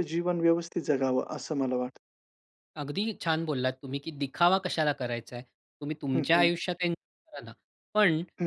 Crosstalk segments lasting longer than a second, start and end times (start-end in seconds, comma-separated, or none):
none